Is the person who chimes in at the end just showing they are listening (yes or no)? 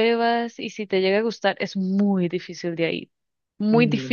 yes